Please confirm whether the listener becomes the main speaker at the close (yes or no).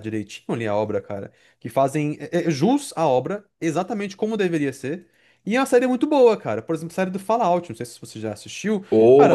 no